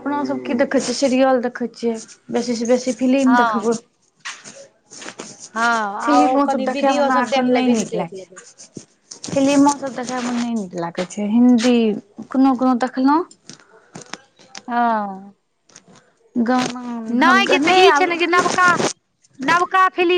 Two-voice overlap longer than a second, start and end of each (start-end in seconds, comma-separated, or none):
5.8-8.4